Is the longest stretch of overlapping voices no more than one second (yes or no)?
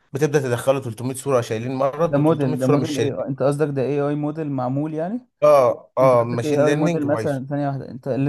no